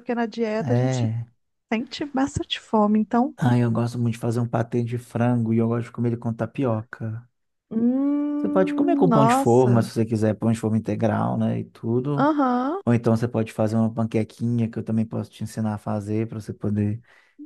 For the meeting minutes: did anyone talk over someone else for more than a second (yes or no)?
yes